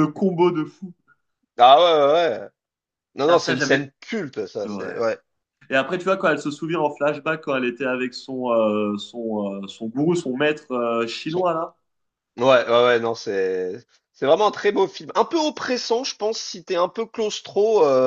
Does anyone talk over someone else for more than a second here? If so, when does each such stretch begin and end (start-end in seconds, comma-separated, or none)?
none